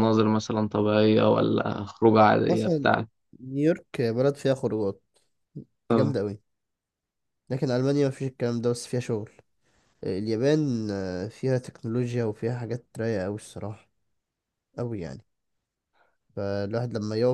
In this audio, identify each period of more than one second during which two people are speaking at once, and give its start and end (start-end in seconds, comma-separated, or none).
none